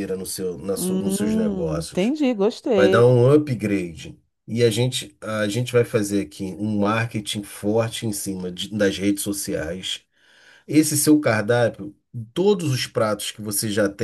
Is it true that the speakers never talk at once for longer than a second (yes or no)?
yes